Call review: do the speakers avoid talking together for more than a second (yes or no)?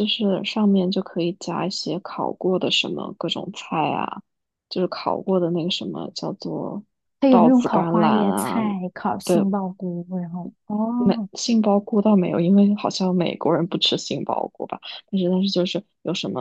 no